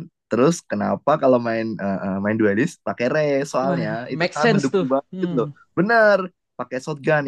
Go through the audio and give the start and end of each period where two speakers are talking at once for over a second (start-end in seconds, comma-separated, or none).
3.6-5.5